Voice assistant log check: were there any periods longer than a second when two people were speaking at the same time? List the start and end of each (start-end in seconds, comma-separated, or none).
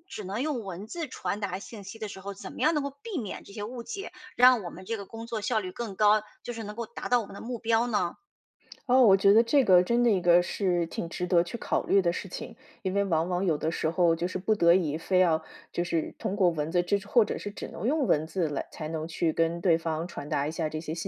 none